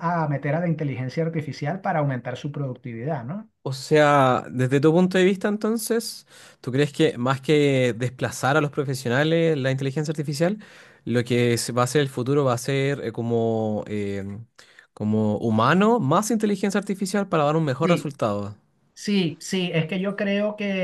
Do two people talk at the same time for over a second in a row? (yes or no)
no